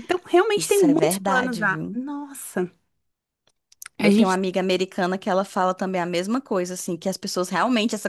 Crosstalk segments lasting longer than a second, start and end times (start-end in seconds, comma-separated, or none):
0.6-2.0